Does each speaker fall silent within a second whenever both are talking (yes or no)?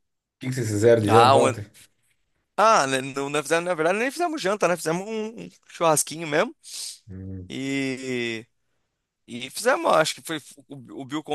yes